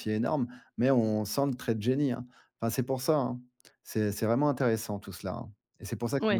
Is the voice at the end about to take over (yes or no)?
yes